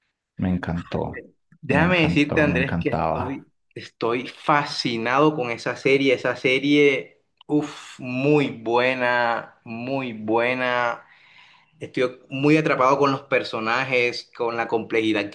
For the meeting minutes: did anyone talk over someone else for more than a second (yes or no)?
yes